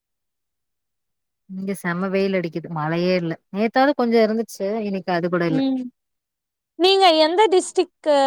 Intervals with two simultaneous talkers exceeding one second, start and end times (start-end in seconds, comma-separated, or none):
none